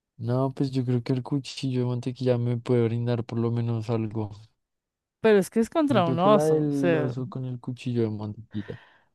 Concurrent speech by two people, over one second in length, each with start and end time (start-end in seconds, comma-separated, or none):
5.9-7.1